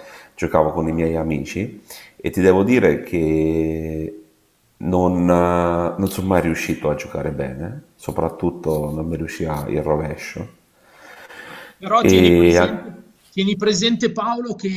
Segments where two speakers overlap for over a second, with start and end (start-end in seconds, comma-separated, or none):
none